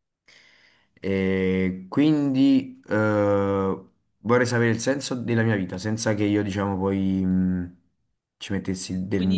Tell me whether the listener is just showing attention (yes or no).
no